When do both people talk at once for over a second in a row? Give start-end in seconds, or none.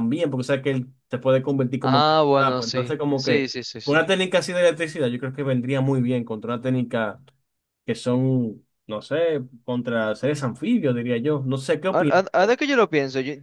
1.8-4.0